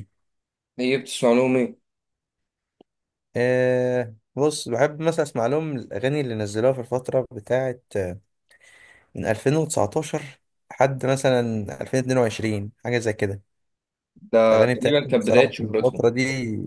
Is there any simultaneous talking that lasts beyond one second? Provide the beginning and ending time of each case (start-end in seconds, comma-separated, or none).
14.5-16.1